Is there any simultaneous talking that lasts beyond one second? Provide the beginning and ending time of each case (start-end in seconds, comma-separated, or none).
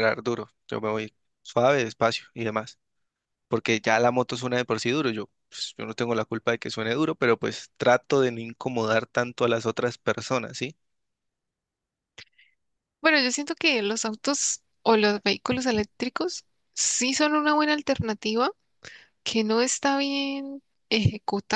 none